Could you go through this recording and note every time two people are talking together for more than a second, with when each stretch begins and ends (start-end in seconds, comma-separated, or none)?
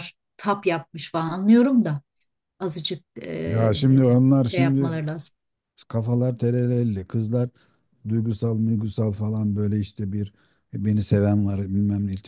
none